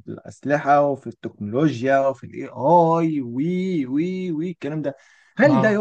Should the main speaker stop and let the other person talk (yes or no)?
no